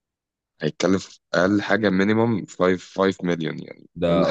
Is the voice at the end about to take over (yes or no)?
yes